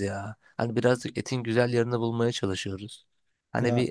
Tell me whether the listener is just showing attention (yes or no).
yes